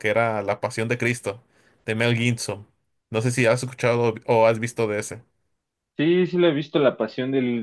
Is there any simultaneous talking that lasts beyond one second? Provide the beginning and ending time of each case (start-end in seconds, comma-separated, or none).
none